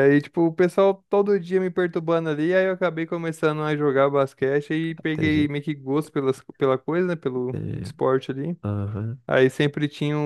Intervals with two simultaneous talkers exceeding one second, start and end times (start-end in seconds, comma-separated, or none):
none